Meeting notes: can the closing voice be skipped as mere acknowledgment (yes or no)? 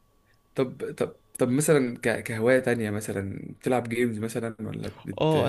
no